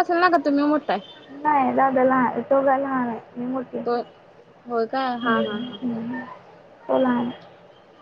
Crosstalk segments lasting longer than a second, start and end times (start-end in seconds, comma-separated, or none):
none